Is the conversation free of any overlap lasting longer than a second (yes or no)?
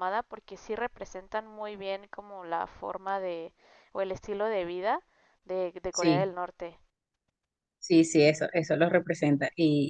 yes